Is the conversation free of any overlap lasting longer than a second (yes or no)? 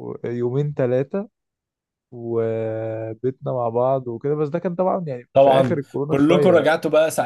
no